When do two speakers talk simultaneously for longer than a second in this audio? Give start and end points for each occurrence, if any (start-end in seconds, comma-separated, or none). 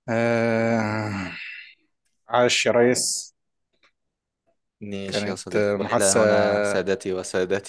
5.1-6.8